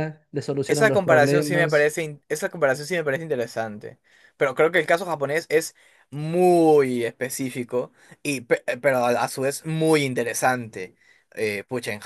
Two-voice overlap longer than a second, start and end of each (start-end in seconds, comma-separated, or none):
0.7-1.9